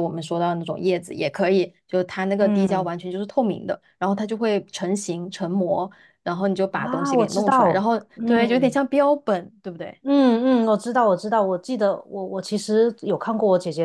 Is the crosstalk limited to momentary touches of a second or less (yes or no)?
no